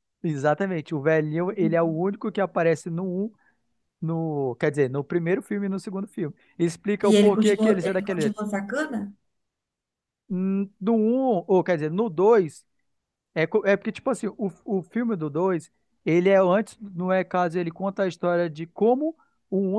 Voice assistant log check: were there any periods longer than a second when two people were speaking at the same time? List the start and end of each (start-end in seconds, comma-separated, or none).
7.0-8.4